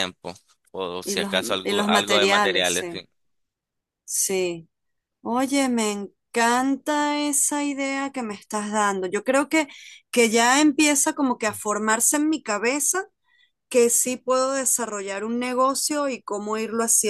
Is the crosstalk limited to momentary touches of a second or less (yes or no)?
no